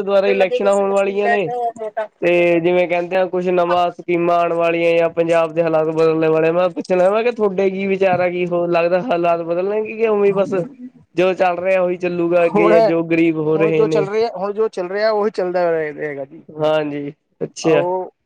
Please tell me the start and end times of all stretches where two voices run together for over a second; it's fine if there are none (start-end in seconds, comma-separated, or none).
none